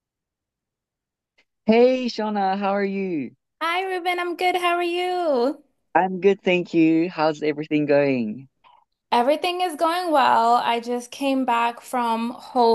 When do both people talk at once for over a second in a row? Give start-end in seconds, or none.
none